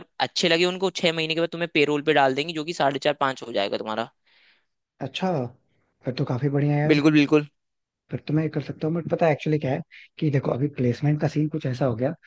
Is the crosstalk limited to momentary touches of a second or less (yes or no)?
yes